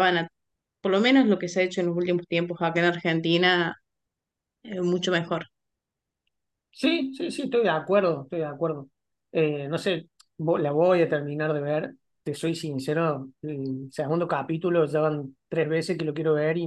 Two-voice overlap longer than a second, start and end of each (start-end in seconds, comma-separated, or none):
none